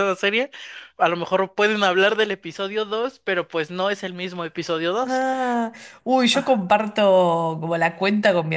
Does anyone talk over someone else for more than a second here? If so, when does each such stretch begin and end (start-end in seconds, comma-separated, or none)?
none